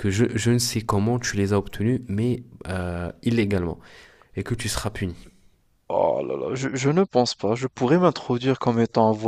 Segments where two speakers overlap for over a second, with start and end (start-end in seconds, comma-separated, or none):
none